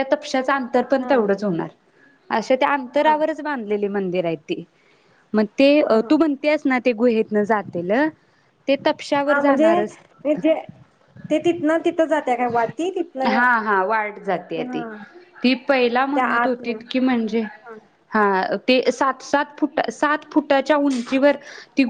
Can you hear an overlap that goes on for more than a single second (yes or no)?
no